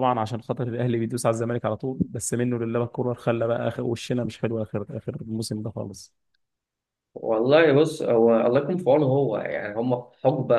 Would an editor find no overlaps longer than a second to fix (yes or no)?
yes